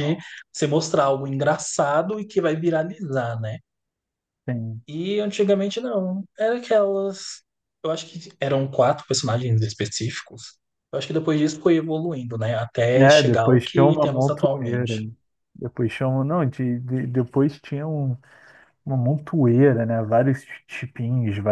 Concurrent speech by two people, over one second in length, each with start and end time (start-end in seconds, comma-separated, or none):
12.9-14.9